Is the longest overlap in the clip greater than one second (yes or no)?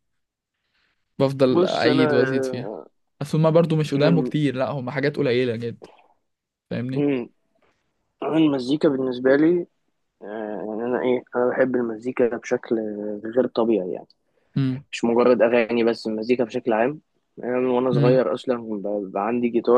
yes